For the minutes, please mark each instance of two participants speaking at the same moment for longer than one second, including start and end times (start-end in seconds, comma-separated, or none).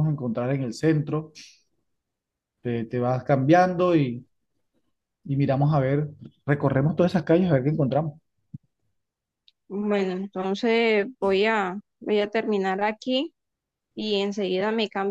none